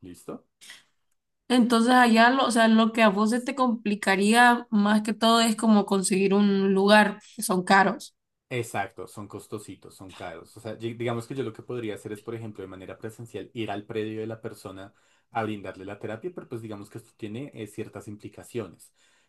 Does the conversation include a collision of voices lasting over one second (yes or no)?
no